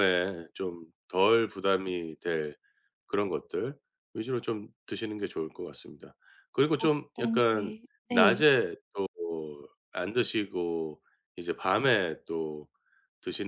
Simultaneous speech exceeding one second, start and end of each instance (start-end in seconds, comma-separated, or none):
6.8-8.5